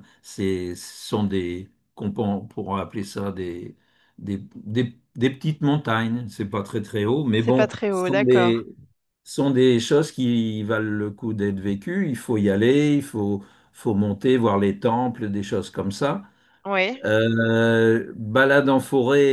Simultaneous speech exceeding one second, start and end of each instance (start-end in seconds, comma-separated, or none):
7.4-8.6